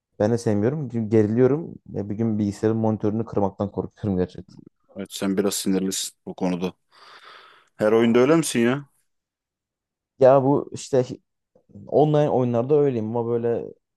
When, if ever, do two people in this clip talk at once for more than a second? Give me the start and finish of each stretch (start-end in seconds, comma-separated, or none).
none